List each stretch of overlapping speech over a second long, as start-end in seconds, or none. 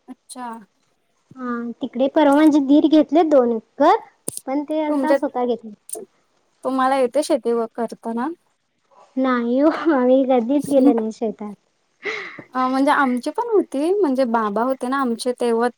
none